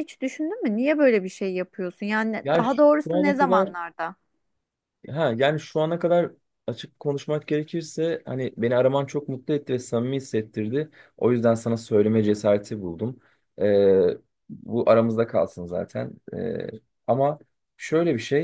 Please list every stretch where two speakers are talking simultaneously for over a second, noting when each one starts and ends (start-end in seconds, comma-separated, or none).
2.4-3.7